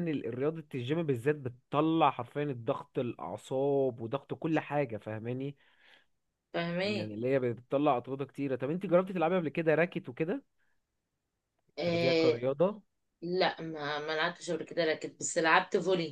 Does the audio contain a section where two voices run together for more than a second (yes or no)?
no